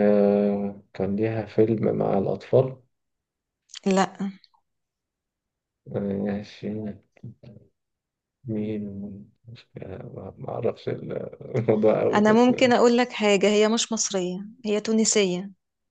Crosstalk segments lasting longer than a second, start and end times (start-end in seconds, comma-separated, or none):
none